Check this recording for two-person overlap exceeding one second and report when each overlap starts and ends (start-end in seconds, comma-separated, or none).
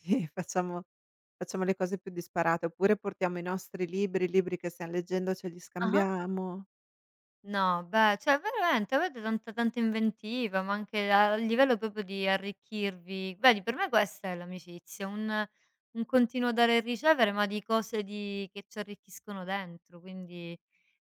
none